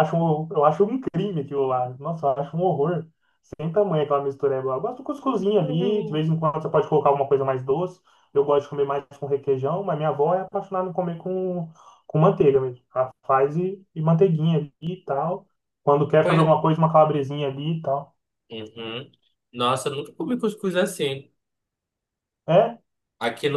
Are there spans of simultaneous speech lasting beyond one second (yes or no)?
no